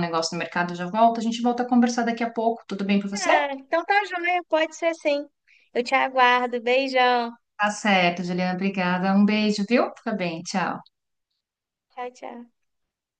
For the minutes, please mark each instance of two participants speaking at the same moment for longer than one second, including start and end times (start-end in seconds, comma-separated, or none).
none